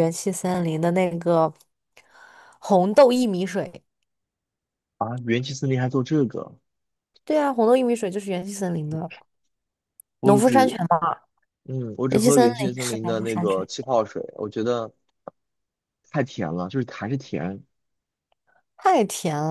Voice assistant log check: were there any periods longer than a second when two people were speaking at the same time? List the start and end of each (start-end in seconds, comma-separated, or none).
12.1-13.7